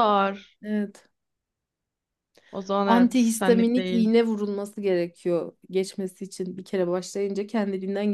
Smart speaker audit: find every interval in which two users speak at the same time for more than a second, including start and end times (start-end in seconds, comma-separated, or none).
2.8-4.1